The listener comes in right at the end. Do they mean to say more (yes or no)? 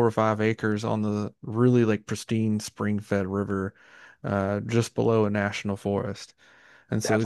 no